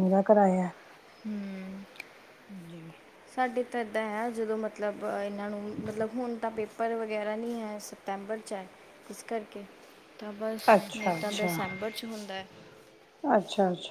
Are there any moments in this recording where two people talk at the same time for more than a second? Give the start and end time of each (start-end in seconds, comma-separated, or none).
none